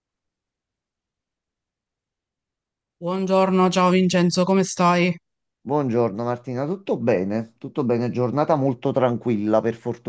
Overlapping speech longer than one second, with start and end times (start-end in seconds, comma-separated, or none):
none